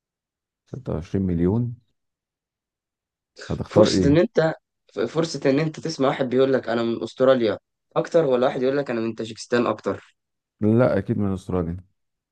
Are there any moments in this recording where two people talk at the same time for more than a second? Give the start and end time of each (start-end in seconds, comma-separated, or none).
none